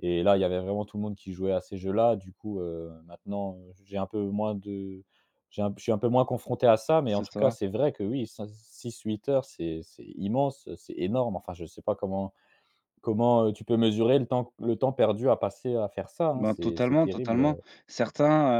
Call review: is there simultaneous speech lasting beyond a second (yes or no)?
yes